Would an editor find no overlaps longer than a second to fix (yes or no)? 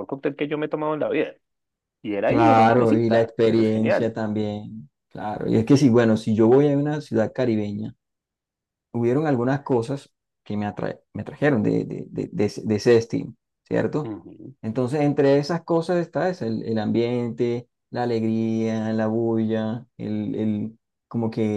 no